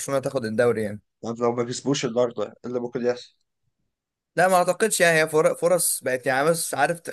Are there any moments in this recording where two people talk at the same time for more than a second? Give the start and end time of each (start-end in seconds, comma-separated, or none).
none